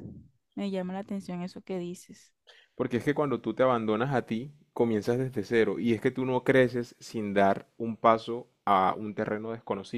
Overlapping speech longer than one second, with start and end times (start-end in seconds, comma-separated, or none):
none